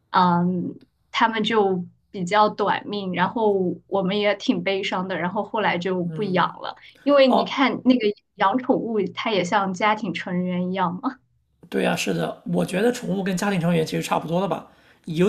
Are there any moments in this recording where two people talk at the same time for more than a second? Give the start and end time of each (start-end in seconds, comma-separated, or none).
none